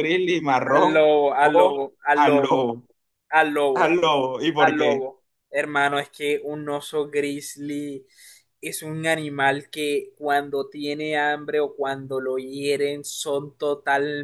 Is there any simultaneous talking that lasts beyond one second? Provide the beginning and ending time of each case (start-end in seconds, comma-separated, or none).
0.7-2.6